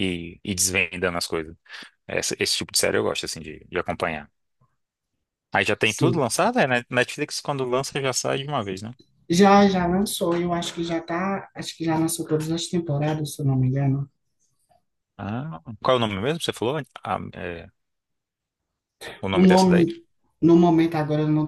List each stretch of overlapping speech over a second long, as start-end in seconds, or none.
none